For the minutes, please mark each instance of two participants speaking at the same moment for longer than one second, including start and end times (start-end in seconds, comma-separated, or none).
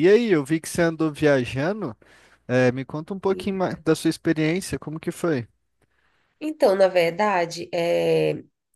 none